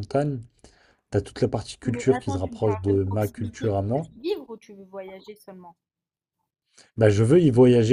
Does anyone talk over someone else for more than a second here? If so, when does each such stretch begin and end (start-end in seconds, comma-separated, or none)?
1.9-4.0